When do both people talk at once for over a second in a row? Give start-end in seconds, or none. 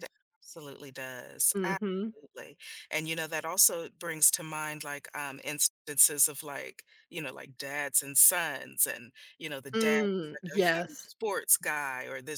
9.7-11.1